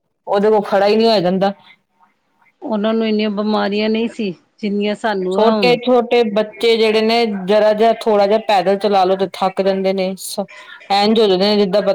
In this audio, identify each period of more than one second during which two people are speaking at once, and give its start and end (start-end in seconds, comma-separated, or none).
none